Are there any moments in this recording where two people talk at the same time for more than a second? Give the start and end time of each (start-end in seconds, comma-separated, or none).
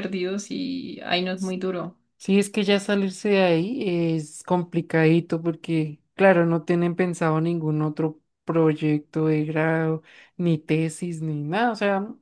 none